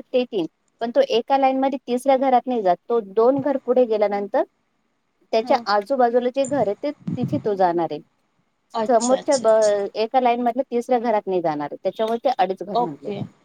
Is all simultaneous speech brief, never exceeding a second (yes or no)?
yes